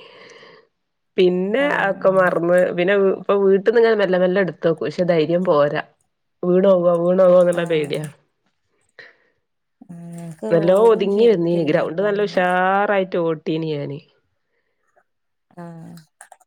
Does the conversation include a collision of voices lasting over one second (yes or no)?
yes